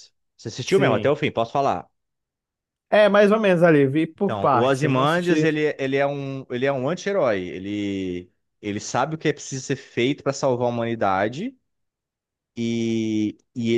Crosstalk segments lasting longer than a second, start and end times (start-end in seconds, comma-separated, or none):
4.2-5.5